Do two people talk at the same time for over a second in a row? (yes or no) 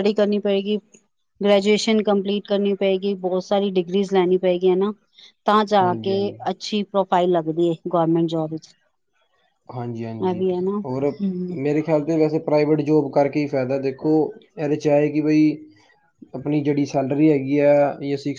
no